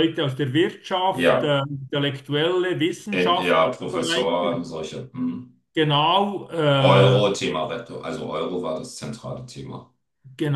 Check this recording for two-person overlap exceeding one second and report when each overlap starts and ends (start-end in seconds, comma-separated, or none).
3.1-4.6